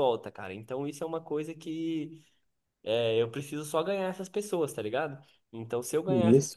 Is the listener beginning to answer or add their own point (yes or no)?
no